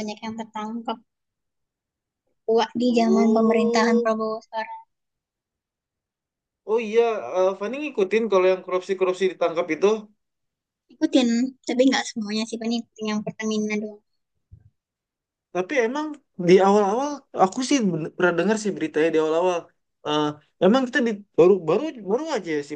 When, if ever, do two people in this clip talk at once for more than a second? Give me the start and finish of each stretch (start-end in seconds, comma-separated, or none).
2.9-4.1